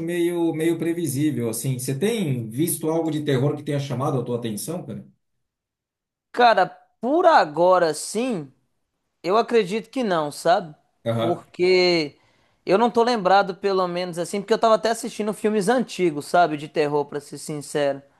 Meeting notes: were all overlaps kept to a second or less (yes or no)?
yes